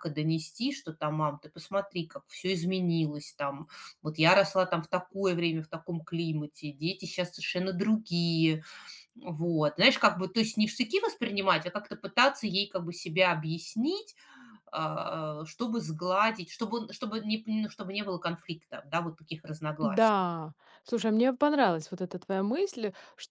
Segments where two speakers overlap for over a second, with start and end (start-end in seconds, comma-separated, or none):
none